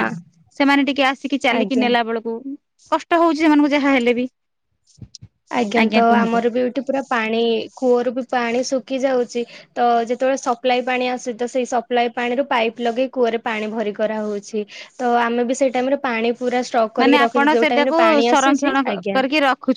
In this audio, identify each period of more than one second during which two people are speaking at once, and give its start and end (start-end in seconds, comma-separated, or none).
17.0-19.2